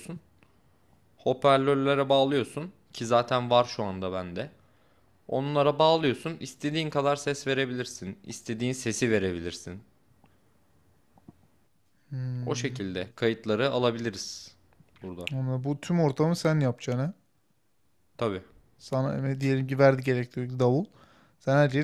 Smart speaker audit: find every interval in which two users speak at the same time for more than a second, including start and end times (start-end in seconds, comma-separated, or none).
none